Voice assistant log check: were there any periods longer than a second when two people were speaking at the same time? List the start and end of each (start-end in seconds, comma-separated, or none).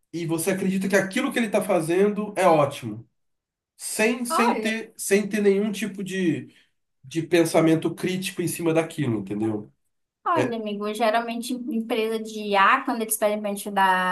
none